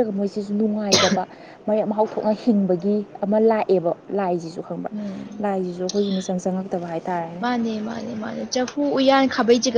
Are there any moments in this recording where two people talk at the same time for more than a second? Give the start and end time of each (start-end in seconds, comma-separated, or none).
none